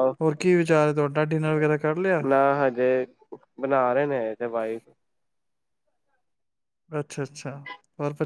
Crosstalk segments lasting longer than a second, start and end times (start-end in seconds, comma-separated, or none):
none